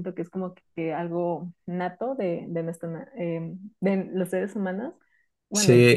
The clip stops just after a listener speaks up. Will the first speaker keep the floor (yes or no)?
no